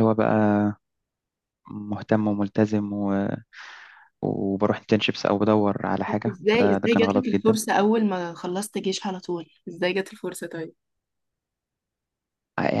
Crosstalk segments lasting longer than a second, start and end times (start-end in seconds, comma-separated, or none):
6.3-7.6